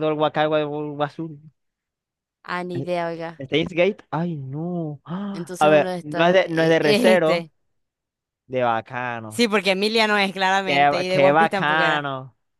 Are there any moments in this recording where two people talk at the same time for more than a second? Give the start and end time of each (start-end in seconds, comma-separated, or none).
5.3-7.5, 10.7-12.1